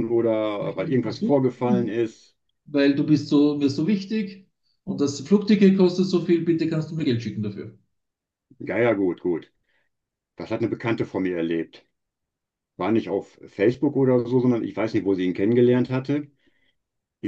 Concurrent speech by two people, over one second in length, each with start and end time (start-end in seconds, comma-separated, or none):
0.6-2.0